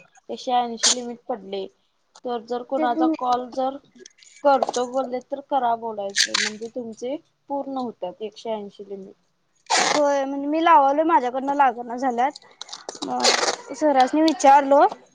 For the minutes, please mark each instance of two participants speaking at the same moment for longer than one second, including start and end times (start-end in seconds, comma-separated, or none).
none